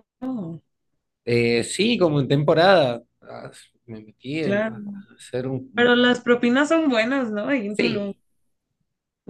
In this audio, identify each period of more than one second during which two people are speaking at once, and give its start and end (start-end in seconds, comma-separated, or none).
none